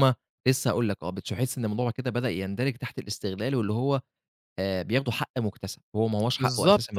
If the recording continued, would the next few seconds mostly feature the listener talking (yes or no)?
yes